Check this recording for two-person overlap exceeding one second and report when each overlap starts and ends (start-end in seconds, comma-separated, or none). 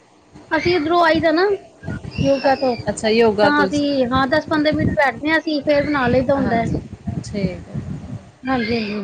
none